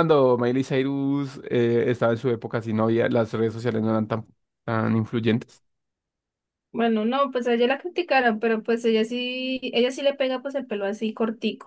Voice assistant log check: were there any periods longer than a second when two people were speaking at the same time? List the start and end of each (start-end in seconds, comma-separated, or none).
none